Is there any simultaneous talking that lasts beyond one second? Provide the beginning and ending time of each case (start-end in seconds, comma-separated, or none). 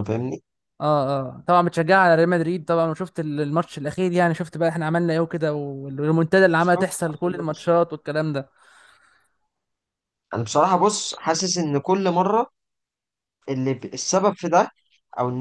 6.6-7.8